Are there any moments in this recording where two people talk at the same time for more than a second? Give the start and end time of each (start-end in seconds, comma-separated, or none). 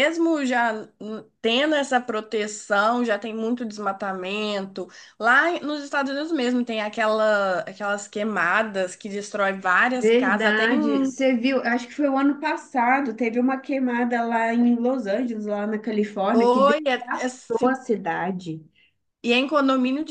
9.9-11.2, 16.3-17.7